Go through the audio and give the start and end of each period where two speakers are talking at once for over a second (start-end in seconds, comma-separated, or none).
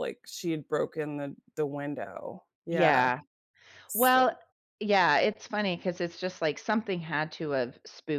none